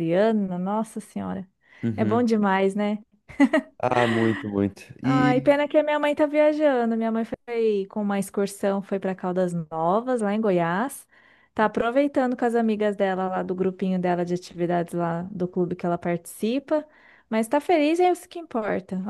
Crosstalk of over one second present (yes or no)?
no